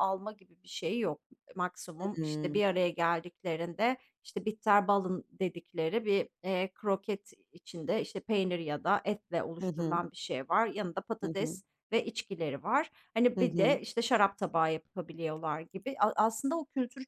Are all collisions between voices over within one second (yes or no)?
yes